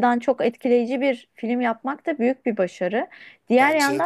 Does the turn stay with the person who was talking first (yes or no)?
yes